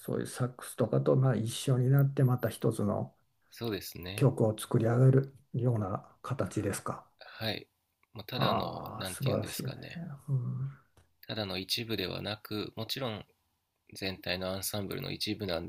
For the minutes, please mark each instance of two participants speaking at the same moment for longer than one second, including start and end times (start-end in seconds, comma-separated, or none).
8.3-9.7